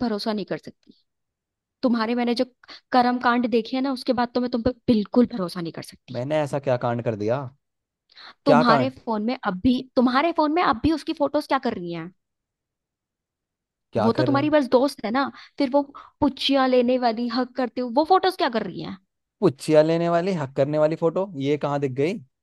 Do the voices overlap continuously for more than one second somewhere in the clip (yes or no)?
no